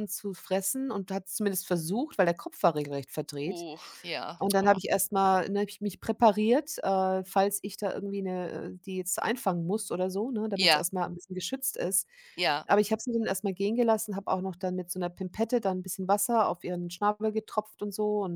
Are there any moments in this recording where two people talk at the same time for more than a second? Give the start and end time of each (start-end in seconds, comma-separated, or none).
none